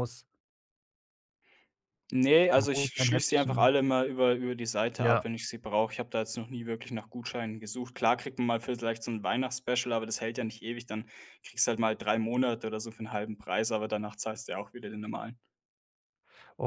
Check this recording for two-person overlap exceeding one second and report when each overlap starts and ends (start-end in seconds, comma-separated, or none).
2.5-3.8